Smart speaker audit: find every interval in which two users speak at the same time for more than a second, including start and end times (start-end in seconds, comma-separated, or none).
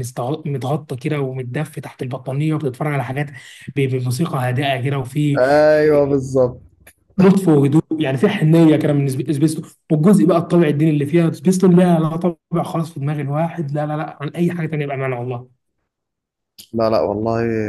none